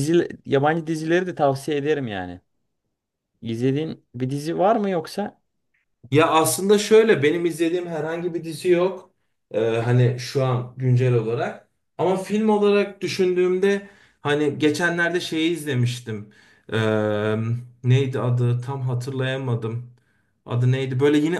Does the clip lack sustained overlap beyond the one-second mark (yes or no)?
yes